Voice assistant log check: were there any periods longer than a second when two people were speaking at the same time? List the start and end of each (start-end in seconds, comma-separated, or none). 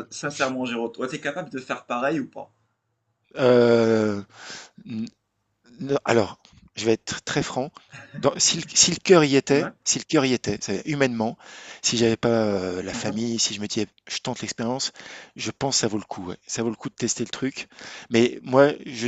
none